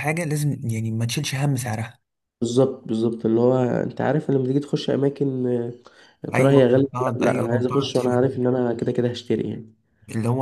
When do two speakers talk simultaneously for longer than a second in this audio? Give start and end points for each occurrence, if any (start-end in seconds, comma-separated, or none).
6.3-8.2